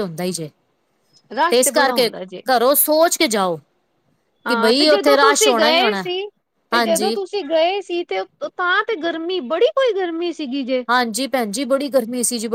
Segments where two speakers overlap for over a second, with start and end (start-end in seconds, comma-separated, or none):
4.5-6.0